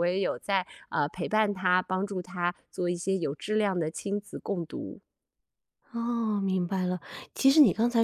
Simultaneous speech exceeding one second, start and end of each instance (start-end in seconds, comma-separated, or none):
none